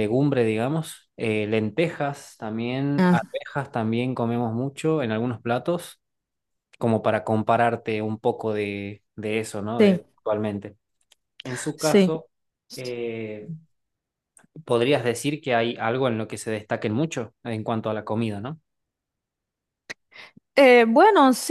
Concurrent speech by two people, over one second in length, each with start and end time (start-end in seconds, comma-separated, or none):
none